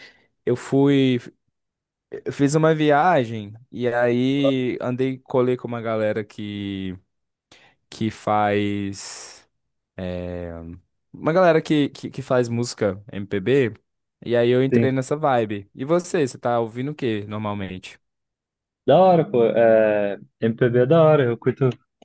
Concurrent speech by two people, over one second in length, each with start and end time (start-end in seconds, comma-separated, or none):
none